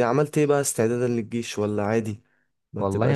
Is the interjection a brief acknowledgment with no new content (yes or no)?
no